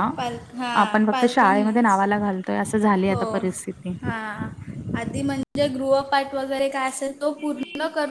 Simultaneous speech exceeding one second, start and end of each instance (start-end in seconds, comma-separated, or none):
0.8-2.0